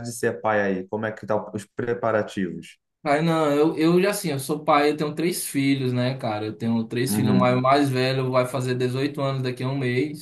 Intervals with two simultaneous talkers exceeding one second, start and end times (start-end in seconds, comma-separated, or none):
none